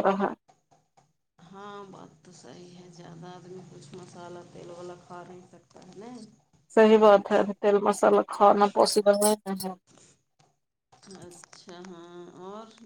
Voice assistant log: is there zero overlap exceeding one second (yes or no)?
yes